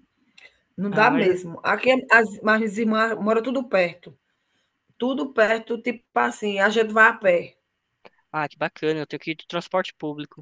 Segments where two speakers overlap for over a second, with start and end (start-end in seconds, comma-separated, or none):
none